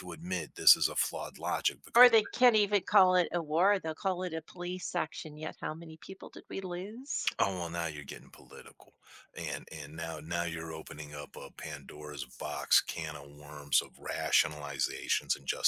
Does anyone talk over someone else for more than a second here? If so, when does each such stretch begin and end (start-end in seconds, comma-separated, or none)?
none